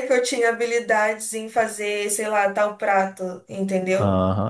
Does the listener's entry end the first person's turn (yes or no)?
yes